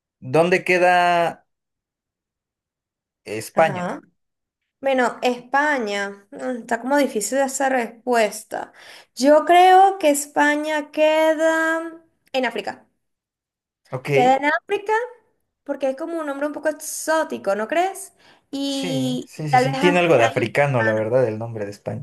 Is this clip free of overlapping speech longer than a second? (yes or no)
no